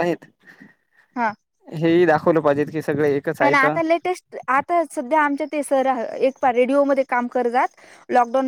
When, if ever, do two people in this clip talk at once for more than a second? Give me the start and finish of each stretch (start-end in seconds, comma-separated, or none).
none